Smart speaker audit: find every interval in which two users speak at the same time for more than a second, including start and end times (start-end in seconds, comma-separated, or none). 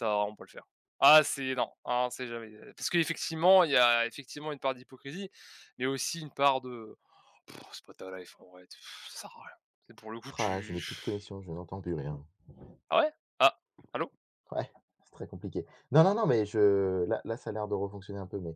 none